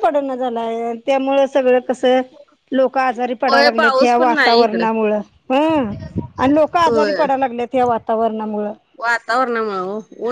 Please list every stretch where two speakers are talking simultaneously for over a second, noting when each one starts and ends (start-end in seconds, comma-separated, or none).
3.5-4.8